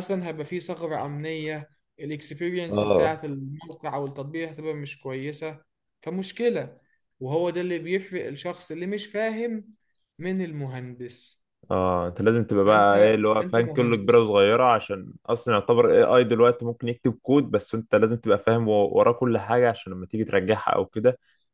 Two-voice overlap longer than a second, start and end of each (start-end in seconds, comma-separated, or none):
12.7-14.2